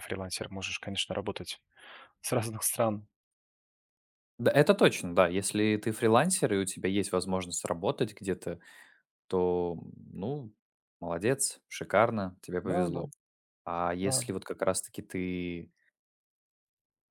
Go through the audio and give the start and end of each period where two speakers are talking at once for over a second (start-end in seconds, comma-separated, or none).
none